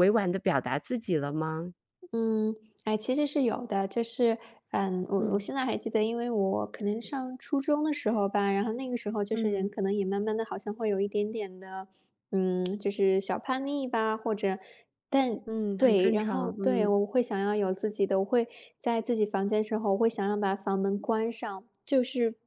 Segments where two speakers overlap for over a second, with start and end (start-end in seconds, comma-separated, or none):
15.4-16.9